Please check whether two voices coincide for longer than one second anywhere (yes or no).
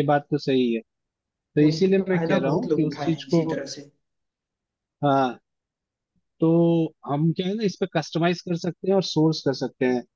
yes